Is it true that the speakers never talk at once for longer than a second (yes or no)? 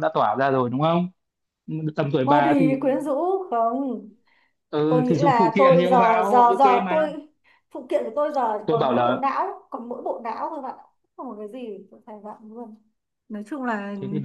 no